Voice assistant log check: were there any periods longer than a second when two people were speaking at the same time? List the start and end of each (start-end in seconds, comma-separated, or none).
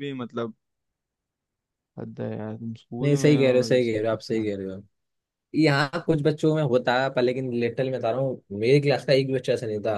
3.0-4.5